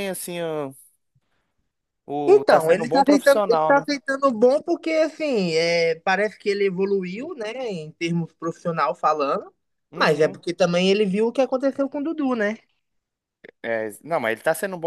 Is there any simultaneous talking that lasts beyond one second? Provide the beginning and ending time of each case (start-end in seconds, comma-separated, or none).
2.3-3.8